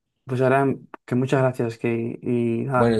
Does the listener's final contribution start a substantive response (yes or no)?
yes